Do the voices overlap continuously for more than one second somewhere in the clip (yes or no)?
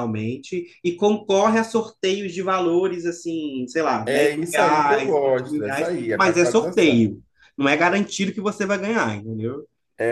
yes